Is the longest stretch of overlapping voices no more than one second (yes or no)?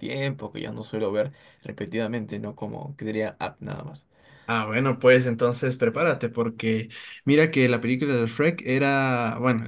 yes